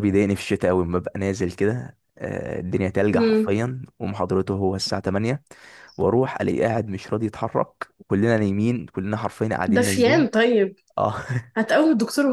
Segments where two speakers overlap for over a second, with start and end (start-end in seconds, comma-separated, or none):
none